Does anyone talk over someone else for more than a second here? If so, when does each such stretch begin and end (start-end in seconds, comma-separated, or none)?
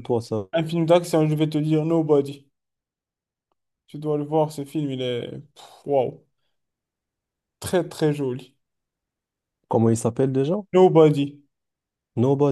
none